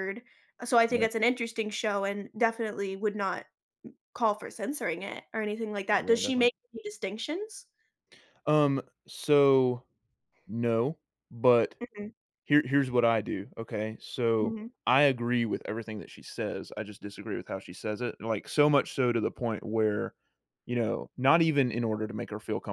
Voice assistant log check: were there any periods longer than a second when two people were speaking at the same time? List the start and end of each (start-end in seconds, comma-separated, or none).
none